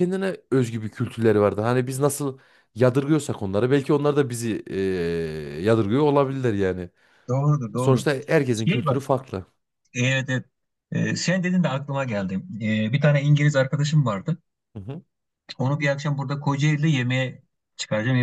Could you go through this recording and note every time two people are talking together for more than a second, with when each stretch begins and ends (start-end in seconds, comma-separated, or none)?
none